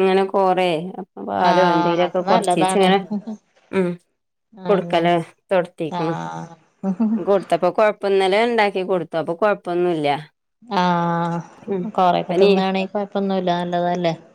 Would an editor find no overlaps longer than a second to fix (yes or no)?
no